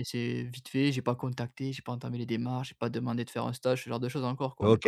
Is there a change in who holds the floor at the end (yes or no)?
yes